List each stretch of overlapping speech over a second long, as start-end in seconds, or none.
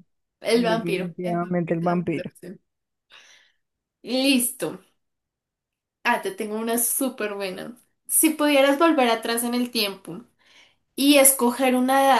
0.5-2.3